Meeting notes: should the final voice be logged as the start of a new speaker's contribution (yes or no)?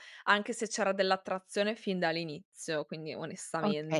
yes